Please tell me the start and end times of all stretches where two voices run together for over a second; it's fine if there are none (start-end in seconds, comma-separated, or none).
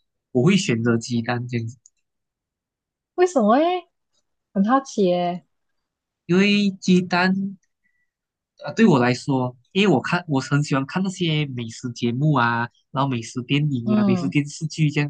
none